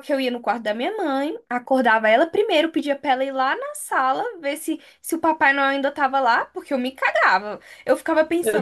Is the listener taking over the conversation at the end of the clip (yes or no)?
no